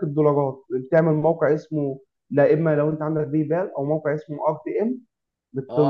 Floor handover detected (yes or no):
yes